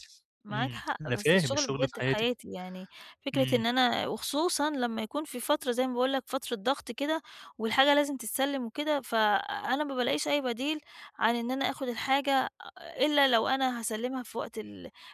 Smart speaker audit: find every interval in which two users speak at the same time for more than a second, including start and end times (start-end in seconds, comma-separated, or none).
0.5-2.3